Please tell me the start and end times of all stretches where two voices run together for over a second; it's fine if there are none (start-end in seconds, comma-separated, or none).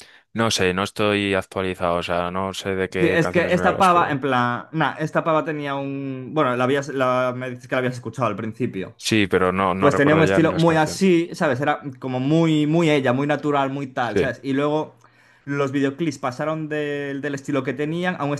3.0-4.2, 9.8-11.0